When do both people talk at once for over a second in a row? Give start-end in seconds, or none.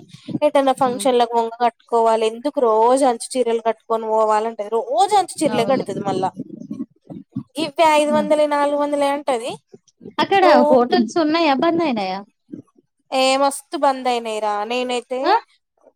none